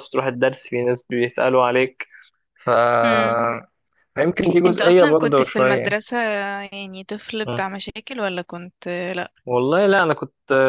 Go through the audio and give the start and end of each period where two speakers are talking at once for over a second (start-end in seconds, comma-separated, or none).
4.7-6.0